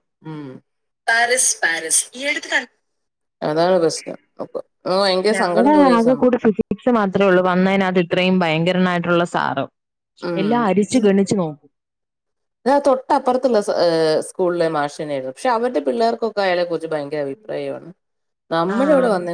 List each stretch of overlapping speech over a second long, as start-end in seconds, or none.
none